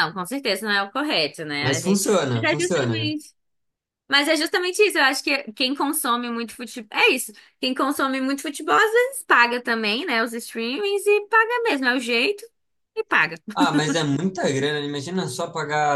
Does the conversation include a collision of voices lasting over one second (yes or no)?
yes